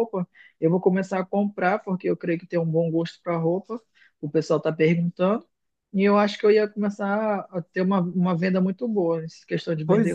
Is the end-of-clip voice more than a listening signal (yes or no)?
yes